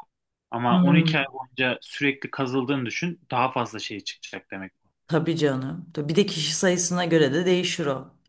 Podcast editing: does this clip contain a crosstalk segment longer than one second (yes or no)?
no